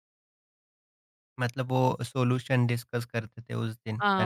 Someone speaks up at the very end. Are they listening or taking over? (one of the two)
taking over